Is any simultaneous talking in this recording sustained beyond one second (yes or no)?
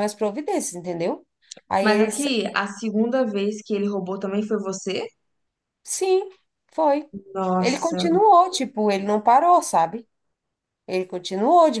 no